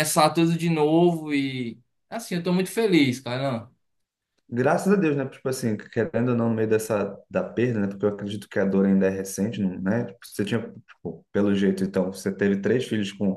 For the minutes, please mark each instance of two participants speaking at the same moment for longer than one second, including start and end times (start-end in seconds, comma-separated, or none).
none